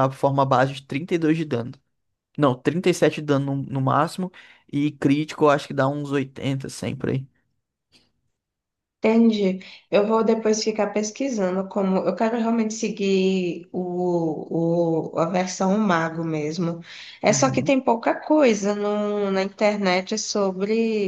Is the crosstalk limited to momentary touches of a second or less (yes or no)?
yes